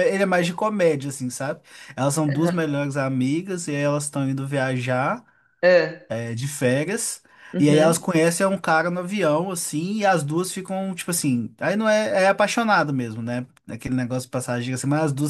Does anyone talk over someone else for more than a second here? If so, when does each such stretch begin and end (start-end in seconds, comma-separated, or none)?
none